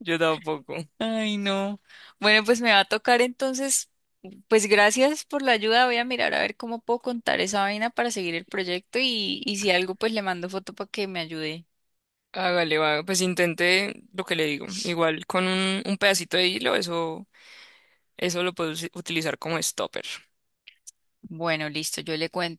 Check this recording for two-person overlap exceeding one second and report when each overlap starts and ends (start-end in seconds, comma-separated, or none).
none